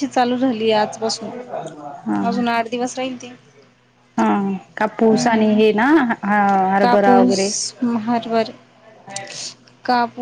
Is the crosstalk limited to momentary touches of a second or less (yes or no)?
yes